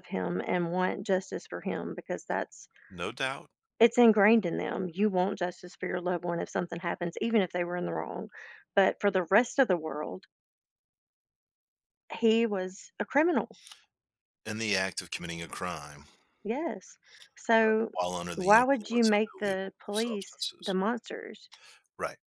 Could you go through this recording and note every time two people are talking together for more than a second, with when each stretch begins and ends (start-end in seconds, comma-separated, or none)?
18.4-20.7